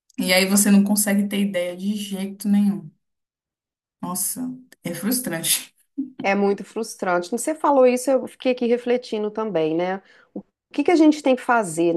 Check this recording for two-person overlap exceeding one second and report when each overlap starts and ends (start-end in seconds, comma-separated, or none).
none